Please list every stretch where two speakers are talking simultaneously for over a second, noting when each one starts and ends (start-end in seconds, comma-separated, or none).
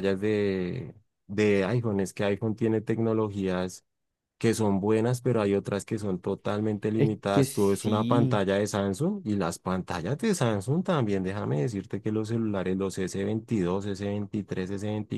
6.9-8.4